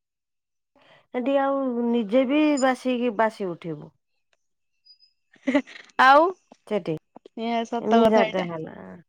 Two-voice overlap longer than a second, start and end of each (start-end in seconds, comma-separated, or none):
none